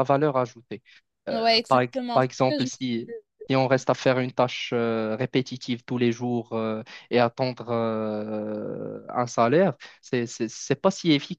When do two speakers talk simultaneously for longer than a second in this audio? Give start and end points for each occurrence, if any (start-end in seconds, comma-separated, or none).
1.3-3.1